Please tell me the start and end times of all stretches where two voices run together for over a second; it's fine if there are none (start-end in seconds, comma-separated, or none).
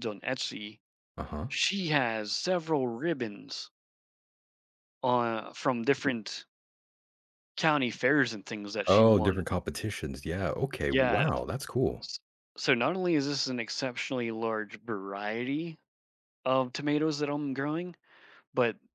none